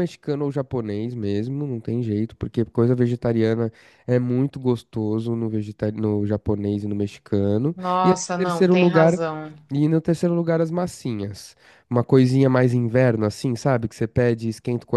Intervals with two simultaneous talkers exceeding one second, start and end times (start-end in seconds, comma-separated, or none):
7.8-9.2